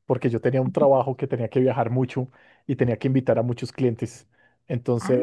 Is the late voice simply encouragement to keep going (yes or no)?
yes